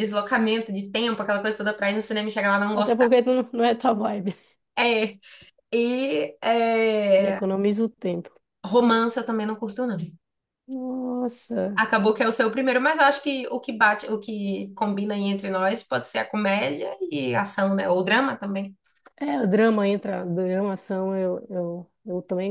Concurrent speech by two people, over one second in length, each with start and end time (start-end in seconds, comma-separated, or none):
none